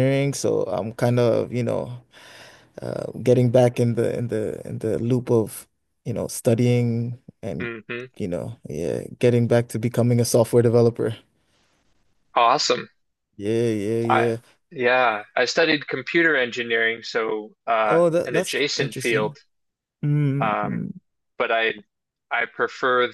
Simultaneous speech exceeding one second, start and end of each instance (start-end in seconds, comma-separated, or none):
17.8-19.4